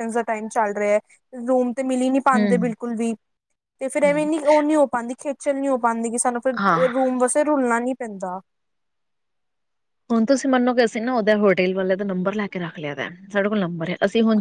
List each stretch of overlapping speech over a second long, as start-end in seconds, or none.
none